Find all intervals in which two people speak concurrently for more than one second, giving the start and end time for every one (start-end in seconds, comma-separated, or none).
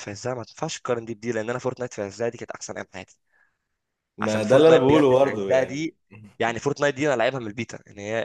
4.2-6.0